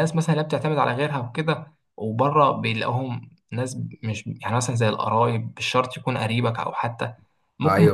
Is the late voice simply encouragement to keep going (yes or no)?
yes